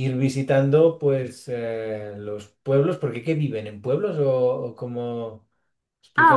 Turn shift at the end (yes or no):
yes